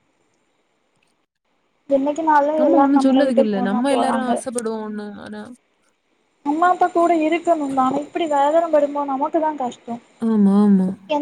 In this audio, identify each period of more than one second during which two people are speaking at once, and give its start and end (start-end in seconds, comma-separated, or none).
none